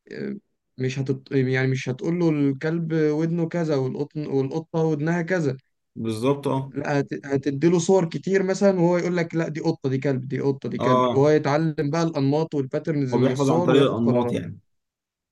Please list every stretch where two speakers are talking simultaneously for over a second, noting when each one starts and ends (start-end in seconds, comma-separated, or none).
13.1-14.4